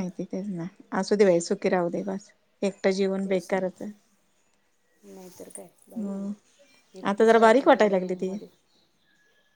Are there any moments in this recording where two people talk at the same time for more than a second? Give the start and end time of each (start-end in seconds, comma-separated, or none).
7.1-8.3